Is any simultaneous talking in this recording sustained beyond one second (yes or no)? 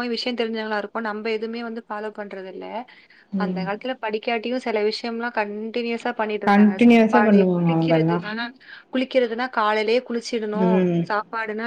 yes